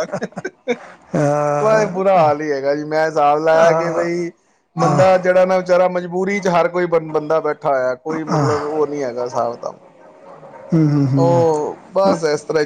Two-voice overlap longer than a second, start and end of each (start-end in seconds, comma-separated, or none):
none